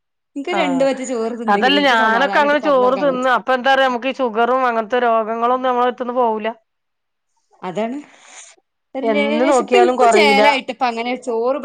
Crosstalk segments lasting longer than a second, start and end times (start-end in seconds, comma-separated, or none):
2.0-3.3, 9.1-10.4